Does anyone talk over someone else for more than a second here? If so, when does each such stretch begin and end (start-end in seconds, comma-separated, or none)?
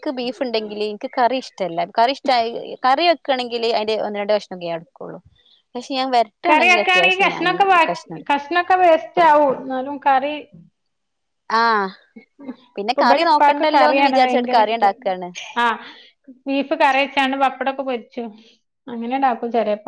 12.9-14.9